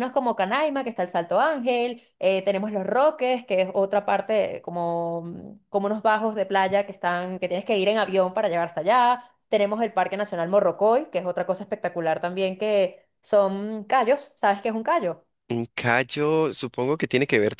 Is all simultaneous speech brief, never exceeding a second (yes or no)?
yes